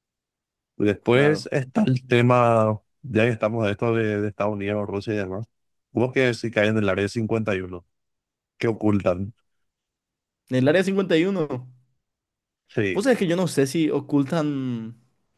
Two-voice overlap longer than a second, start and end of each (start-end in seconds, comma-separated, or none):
none